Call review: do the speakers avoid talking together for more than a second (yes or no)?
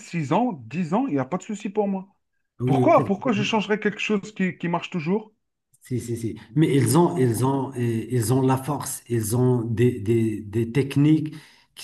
yes